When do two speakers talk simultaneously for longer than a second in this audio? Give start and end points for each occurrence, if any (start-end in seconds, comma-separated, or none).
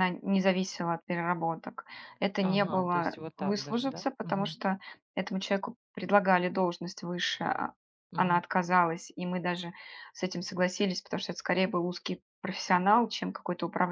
2.5-4.5